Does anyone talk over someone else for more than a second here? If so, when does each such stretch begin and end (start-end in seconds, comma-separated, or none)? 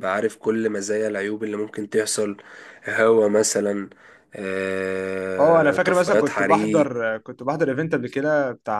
5.4-6.9